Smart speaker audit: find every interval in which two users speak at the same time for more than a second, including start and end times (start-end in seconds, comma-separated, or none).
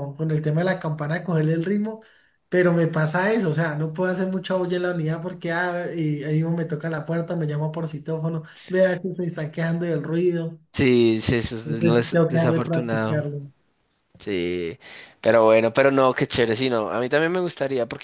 11.6-13.3